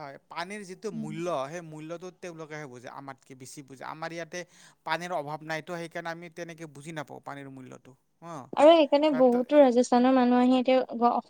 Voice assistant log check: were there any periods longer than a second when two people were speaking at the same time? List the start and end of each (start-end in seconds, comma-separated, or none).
none